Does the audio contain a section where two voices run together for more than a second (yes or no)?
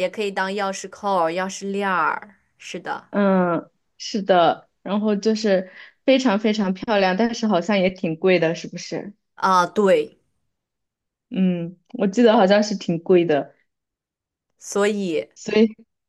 no